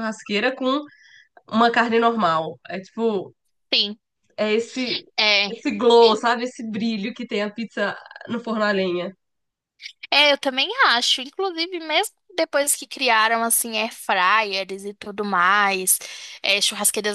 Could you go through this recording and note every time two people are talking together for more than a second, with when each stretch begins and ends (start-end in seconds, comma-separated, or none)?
none